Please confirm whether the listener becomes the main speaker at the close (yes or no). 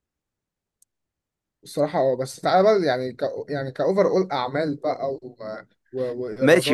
yes